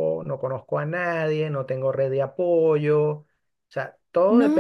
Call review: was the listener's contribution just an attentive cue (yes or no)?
no